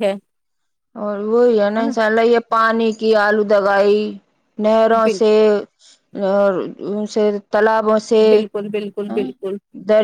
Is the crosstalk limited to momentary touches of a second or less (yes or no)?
yes